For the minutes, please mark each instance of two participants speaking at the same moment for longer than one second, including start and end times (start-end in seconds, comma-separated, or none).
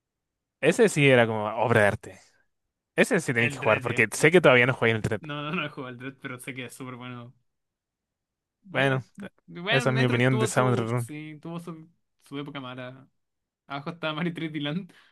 3.4-4.8, 9.7-11.1